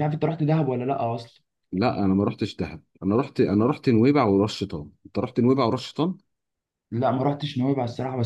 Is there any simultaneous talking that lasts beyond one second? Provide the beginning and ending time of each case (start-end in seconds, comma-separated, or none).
none